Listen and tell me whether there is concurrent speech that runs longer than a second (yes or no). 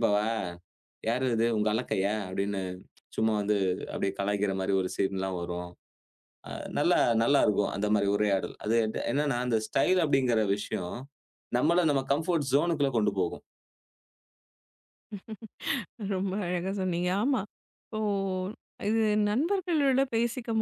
no